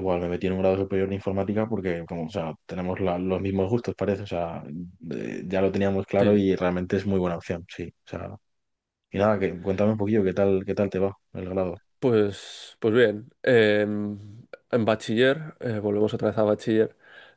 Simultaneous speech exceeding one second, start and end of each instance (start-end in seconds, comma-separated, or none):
none